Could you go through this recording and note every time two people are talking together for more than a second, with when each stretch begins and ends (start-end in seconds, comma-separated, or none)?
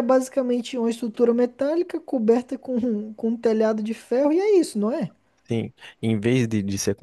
none